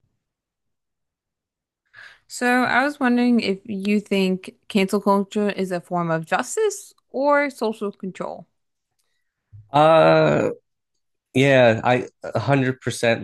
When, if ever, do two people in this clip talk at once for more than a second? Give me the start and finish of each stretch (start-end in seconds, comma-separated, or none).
none